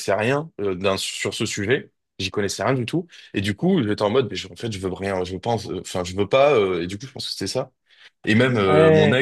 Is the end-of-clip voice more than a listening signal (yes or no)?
no